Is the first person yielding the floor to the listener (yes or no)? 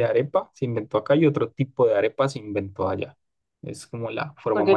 yes